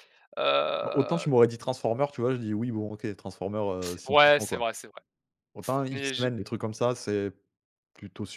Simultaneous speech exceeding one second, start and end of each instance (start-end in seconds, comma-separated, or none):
none